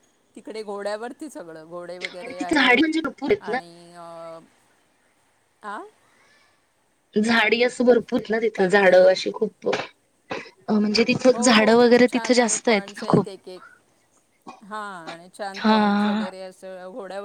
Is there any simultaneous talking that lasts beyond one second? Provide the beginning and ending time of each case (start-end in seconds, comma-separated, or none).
11.3-13.3